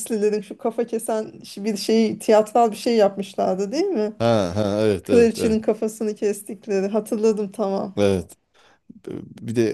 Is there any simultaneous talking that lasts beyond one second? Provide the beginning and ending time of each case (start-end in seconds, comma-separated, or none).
none